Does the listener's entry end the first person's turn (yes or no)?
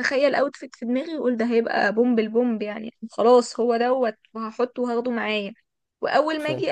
no